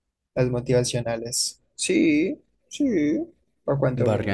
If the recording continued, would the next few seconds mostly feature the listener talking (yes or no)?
yes